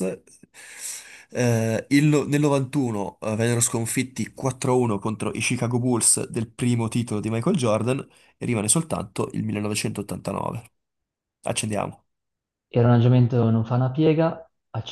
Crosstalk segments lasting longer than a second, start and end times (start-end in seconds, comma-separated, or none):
none